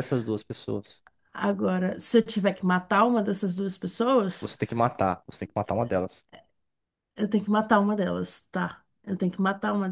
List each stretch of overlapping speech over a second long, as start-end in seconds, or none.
none